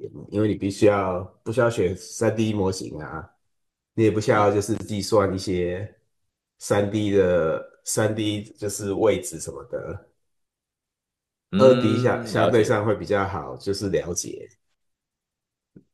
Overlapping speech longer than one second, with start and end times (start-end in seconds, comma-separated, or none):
11.6-12.8